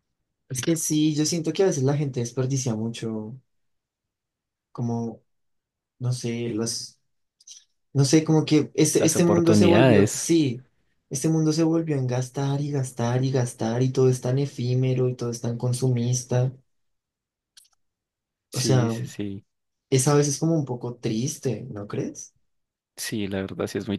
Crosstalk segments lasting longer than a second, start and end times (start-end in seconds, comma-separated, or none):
8.9-10.3